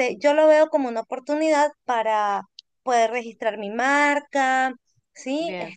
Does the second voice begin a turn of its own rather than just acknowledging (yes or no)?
yes